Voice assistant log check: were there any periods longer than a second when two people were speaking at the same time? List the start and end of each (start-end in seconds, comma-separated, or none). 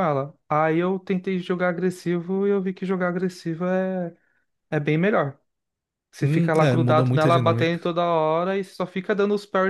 6.2-7.8